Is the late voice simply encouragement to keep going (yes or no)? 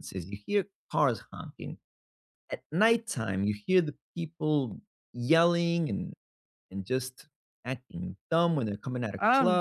no